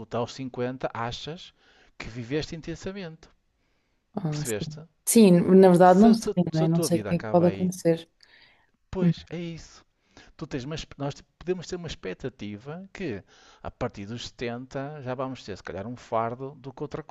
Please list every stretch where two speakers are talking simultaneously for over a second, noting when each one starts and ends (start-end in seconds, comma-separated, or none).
5.8-7.7